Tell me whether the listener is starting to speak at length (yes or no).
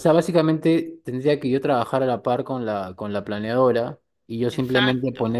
no